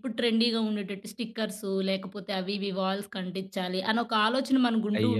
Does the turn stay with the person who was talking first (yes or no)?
no